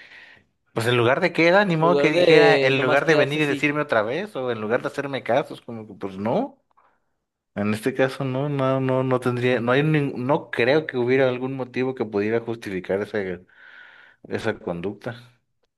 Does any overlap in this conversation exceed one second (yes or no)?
yes